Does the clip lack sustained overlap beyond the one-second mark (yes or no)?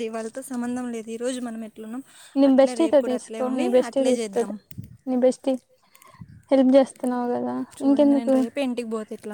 no